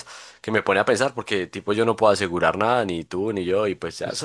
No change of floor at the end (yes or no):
yes